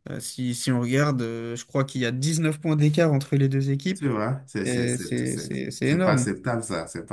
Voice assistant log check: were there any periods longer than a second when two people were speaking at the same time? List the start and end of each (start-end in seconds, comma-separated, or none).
4.6-6.3